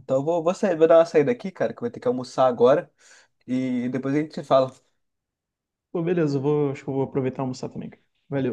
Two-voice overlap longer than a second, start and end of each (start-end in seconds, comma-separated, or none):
none